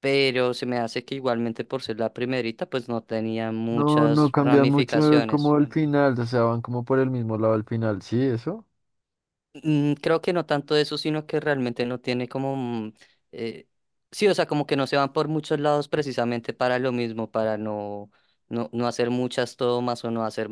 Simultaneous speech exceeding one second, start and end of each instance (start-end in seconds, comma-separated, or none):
3.7-5.6